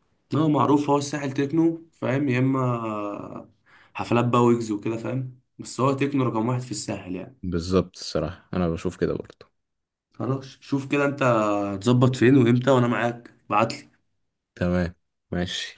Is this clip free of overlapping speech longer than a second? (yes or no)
yes